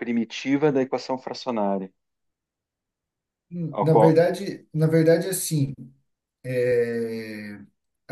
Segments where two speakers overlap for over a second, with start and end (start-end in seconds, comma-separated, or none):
none